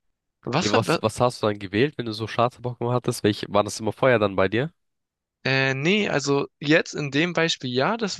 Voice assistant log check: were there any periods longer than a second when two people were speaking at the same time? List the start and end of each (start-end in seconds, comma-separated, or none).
none